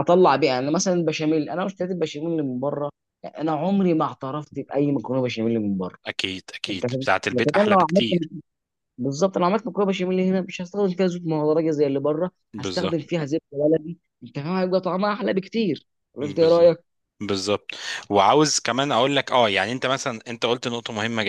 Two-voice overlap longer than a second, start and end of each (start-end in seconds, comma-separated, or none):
6.7-8.2